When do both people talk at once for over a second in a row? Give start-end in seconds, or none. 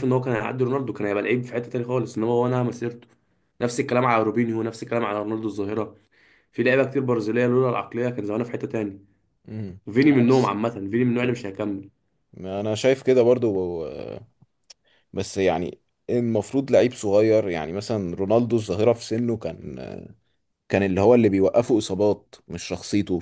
none